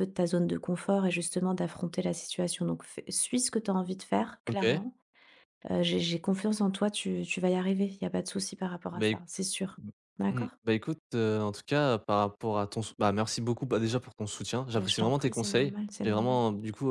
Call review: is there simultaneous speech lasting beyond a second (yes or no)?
yes